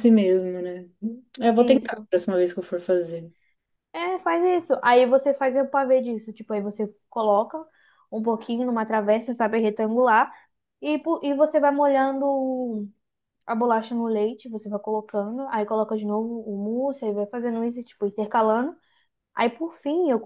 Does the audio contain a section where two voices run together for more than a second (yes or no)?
no